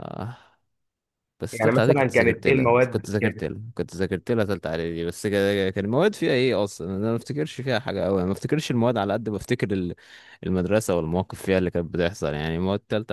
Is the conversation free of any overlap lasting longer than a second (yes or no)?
no